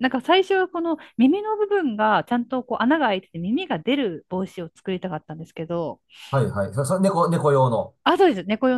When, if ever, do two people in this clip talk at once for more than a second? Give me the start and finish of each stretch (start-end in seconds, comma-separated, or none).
none